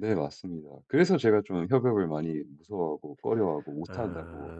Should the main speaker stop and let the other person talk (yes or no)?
yes